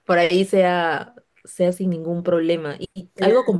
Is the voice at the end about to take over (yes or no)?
no